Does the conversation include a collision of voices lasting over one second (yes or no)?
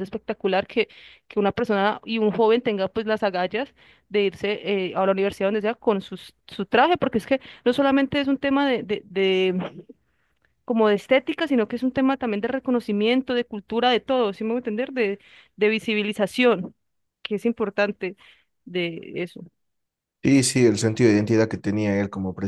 no